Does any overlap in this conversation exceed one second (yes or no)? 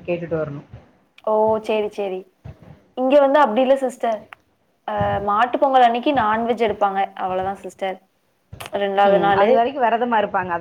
no